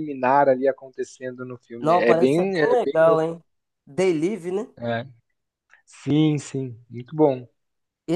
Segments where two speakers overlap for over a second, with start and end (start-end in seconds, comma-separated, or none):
1.8-3.2